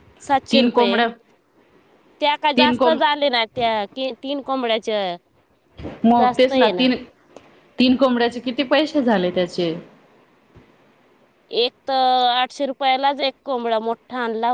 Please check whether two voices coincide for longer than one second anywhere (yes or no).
no